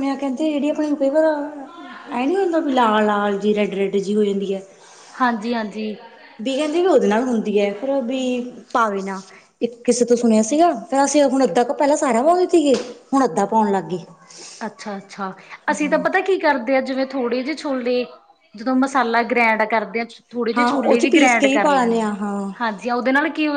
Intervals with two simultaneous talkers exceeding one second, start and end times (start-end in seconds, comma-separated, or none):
20.6-22.1